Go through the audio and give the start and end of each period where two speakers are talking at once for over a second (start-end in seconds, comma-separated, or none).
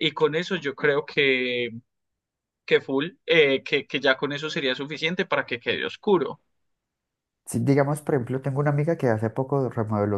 none